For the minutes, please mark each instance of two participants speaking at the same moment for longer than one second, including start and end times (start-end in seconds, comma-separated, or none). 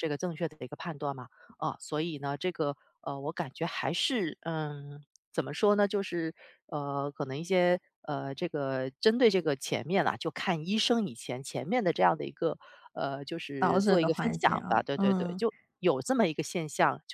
13.6-15.4